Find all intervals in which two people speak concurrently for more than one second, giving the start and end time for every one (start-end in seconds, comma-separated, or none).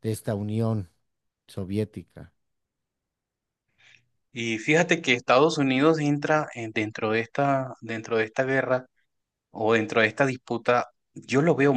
none